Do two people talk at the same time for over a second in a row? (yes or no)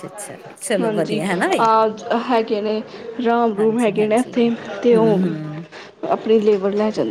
yes